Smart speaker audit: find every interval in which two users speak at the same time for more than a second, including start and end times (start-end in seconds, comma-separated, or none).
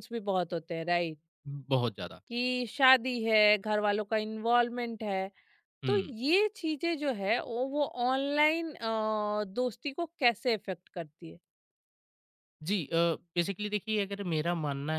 none